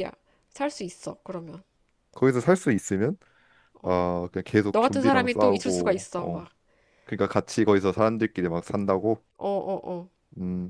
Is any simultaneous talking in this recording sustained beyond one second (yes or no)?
yes